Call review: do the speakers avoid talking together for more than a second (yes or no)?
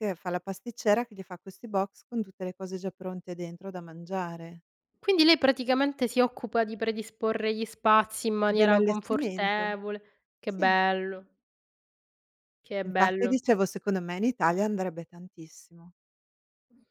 no